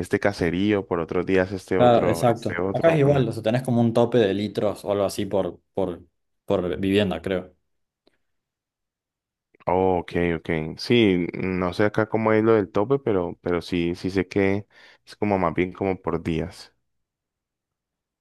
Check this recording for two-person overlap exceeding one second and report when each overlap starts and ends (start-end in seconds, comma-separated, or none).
1.8-3.4